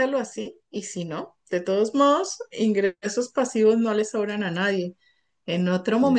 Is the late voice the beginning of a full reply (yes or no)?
no